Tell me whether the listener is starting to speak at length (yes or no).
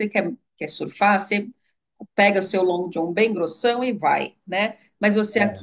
no